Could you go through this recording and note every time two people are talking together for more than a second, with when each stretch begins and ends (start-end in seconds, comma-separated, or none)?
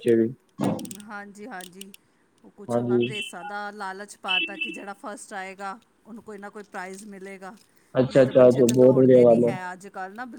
8.1-9.4